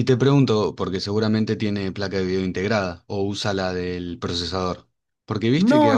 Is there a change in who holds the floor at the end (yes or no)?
yes